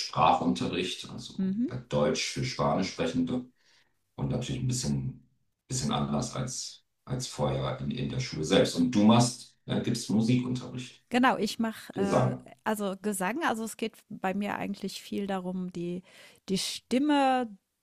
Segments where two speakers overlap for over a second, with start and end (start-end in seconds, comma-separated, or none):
none